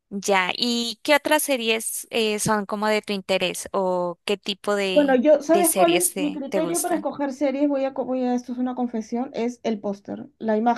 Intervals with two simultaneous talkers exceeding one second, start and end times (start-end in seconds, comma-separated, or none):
4.9-7.1